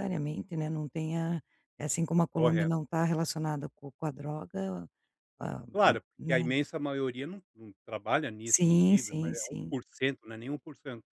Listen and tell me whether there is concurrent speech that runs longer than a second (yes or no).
yes